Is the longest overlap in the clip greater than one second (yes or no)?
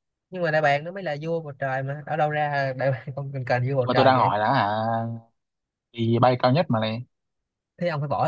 no